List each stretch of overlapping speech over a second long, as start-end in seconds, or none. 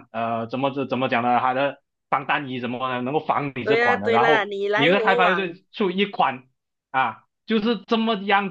3.6-5.6